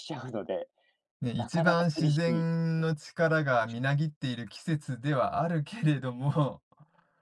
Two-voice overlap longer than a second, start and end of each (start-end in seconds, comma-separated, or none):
1.4-2.9